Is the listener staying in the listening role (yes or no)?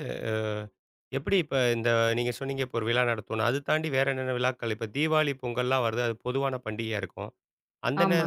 yes